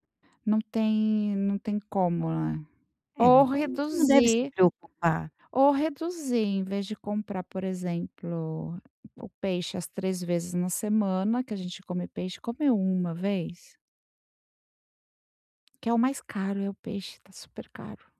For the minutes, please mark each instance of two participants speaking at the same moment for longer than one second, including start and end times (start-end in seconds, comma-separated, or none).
3.2-4.5